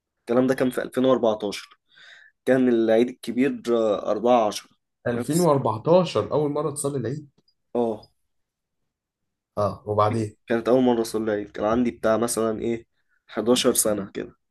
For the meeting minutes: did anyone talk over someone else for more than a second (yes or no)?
no